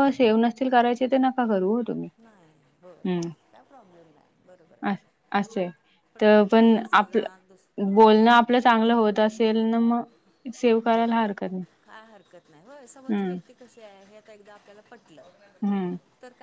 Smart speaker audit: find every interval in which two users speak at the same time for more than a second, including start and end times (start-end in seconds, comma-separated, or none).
6.2-8.0